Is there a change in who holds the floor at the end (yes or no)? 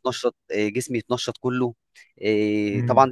no